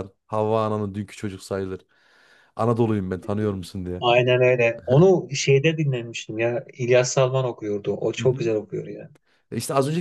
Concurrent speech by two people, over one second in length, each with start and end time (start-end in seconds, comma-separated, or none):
none